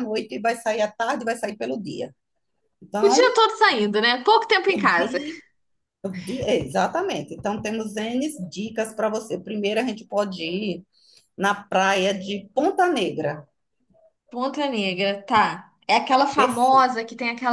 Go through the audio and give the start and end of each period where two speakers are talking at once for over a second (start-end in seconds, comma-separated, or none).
none